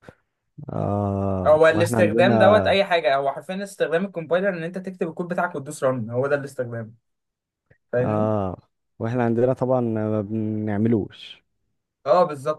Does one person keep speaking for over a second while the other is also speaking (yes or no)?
yes